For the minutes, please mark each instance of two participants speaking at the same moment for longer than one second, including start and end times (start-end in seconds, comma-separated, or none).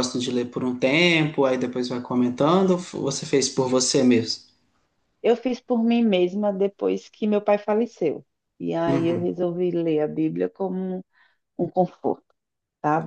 none